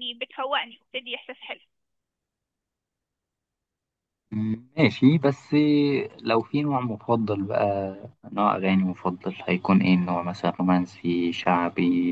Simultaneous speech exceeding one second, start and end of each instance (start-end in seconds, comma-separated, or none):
none